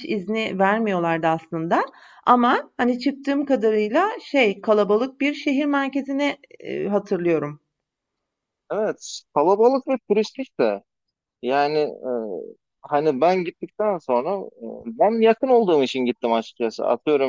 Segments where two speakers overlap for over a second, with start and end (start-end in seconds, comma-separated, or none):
none